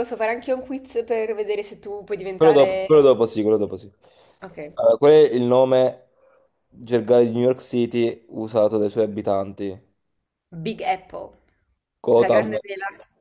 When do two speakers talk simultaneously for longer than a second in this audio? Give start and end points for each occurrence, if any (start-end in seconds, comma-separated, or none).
none